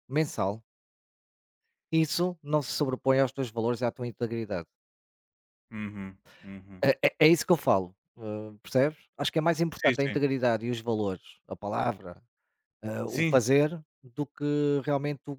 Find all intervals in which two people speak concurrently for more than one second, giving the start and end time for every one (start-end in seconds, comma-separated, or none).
none